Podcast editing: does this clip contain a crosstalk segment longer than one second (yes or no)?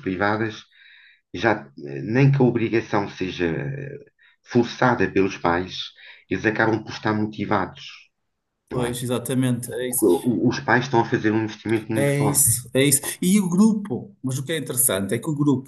no